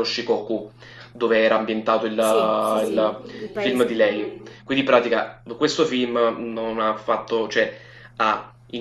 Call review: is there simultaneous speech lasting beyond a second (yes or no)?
yes